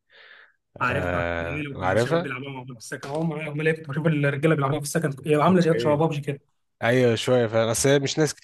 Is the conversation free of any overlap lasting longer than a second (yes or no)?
no